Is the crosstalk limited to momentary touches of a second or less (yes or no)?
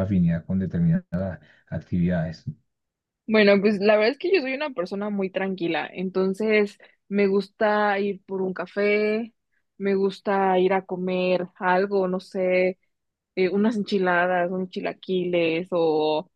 yes